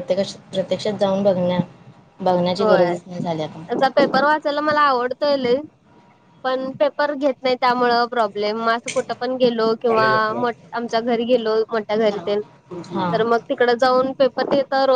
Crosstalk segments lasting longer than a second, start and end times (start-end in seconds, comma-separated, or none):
none